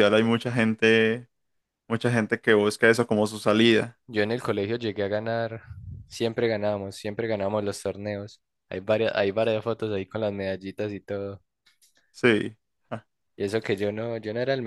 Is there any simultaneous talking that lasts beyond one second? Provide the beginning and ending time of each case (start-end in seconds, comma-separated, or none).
none